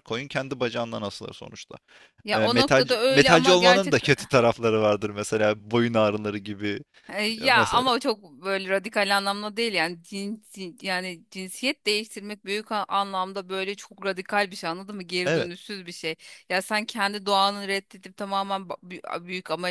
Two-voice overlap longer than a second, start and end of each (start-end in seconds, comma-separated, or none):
2.3-4.0